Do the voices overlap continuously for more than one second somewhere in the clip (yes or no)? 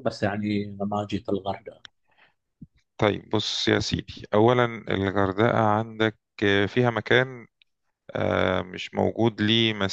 no